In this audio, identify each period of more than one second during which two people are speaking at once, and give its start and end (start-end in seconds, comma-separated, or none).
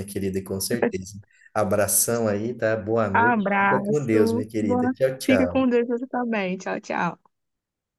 3.1-5.8